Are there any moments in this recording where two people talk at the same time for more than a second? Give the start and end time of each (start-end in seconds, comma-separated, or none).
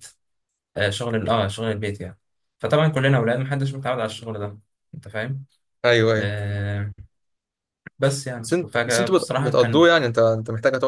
8.4-9.9